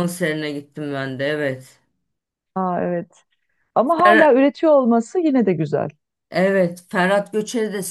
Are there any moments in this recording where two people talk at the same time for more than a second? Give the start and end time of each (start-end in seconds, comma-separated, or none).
none